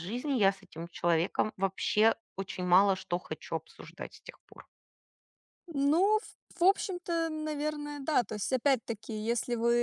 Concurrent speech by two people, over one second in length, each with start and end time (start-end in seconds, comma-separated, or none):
none